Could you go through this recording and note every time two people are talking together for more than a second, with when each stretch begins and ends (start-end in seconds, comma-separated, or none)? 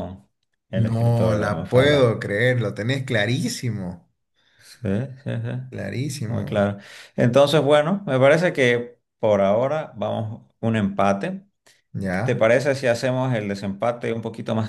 0.7-2.2